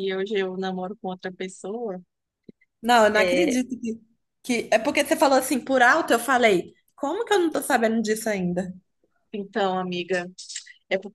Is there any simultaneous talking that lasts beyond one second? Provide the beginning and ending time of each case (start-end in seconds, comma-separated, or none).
none